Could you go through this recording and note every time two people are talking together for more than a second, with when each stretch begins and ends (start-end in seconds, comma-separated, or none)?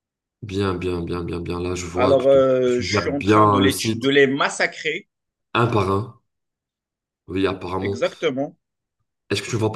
2.0-4.1